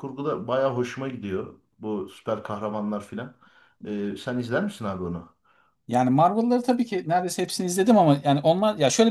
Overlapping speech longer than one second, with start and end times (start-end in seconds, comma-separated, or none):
none